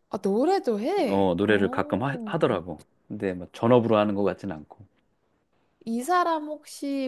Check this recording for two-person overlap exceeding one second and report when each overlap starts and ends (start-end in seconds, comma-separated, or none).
1.1-2.6